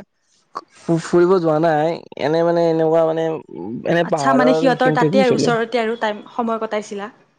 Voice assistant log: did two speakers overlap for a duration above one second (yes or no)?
yes